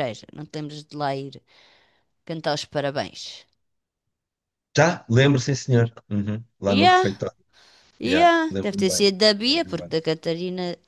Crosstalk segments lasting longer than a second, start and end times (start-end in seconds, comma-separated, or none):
8.0-10.0